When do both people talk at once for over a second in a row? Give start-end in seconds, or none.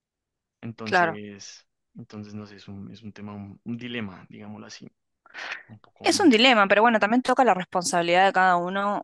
none